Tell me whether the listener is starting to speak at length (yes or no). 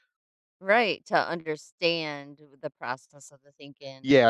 yes